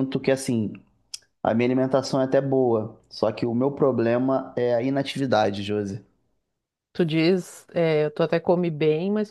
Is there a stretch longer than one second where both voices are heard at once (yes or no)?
no